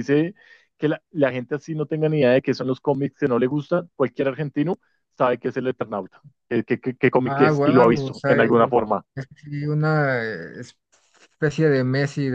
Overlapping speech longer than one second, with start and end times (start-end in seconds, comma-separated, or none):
7.2-8.5